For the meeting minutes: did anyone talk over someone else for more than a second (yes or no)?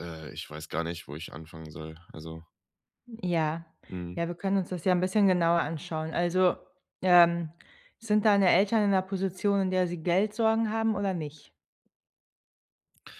no